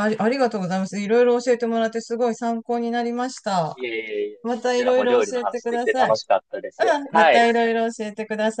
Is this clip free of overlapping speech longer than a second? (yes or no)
no